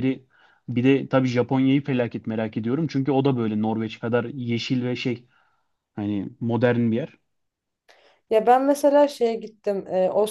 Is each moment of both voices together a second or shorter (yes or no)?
yes